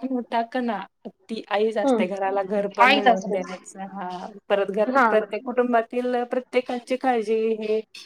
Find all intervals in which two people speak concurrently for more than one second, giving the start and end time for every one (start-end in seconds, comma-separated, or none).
1.9-3.4